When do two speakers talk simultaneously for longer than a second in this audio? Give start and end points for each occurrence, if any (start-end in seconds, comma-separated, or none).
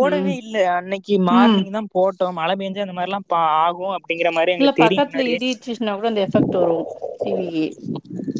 none